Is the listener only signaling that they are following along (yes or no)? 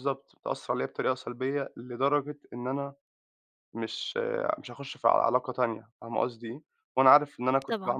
no